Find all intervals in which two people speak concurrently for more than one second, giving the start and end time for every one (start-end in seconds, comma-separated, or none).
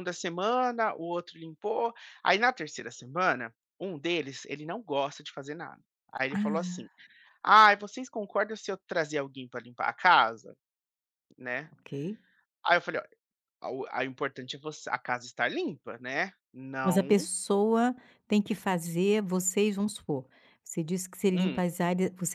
none